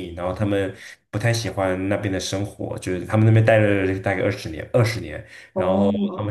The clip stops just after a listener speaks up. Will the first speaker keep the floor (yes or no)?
yes